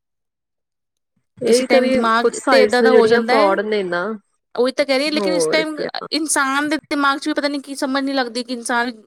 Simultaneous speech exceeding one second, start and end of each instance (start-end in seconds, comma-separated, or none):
1.4-3.5